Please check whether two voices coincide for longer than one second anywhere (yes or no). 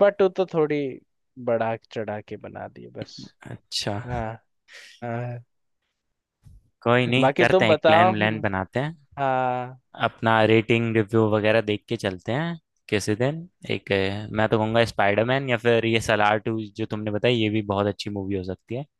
yes